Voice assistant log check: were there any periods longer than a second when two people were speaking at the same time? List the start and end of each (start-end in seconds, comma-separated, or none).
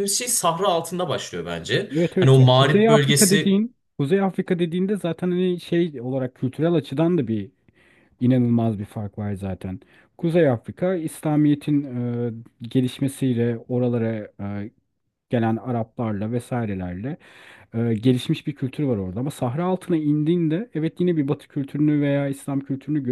1.9-3.6